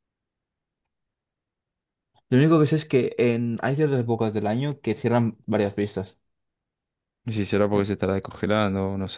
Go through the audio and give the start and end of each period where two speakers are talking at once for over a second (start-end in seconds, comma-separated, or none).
none